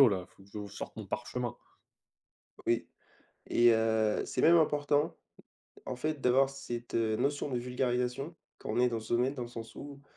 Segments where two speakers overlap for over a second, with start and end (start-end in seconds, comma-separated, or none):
none